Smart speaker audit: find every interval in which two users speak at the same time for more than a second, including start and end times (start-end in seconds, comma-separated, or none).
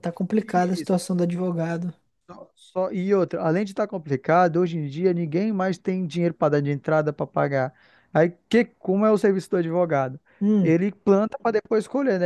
none